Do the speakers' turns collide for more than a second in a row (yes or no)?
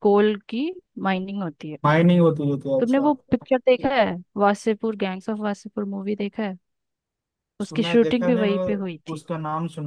yes